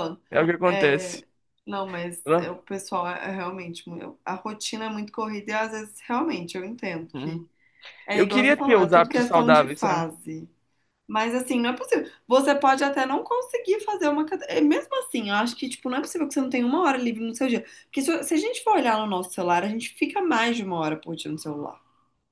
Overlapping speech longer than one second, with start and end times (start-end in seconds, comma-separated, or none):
8.1-10.1